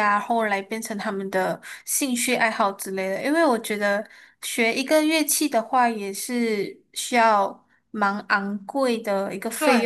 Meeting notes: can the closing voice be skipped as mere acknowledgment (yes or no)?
no